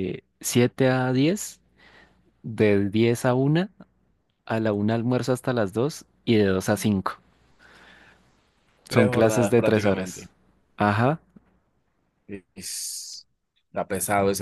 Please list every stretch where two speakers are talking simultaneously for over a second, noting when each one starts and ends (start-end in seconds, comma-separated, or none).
8.9-10.3